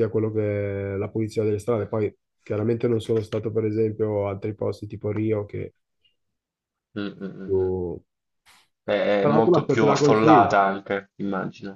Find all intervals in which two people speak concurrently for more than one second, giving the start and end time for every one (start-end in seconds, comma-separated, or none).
9.3-10.6